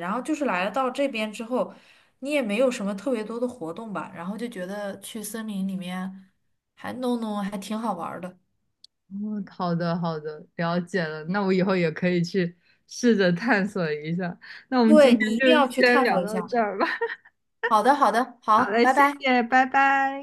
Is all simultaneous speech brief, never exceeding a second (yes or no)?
no